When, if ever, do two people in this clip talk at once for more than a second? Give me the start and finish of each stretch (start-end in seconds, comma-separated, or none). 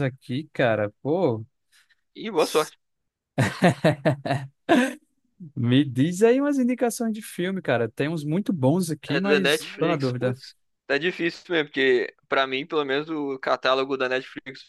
9.1-10.4